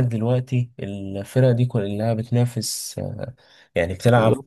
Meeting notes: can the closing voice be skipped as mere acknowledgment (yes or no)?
yes